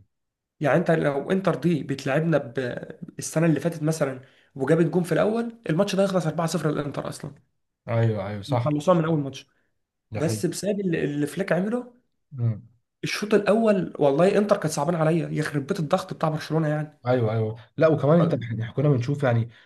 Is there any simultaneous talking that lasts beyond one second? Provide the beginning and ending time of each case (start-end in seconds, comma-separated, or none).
none